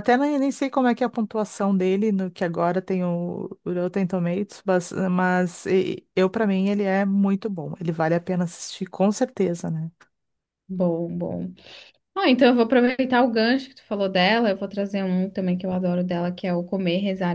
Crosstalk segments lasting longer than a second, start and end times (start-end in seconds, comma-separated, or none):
none